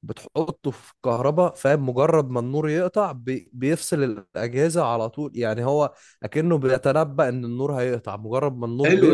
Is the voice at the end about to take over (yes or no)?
yes